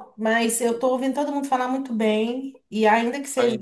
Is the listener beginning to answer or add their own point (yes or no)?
no